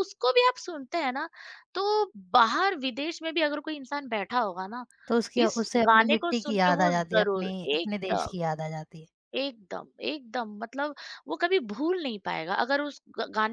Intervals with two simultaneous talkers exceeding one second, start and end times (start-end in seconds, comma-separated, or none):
5.4-8.3